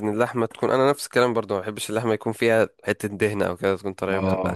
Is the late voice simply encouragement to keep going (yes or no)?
no